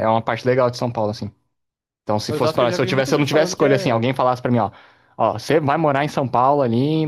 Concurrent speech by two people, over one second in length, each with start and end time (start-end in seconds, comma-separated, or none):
2.3-4.0